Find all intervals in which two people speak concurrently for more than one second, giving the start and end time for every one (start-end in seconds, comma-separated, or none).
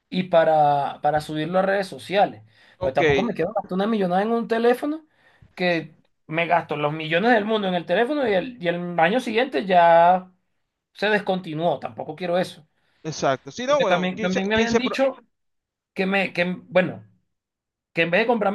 13.6-15.0